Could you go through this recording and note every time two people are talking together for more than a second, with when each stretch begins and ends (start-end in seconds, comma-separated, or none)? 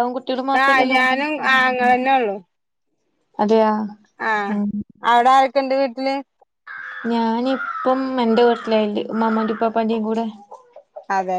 none